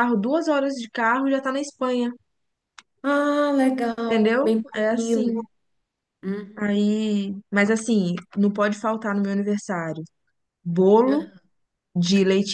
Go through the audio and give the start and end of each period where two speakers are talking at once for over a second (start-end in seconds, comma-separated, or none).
4.1-5.3